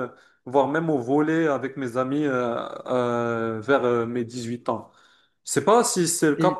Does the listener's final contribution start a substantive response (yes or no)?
no